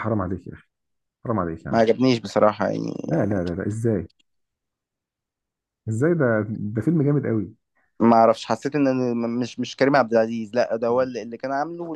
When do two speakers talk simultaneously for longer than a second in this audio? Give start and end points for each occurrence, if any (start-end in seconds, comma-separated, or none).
none